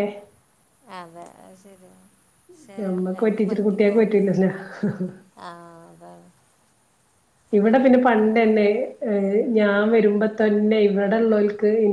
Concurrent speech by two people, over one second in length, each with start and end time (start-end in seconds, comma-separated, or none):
2.8-4.5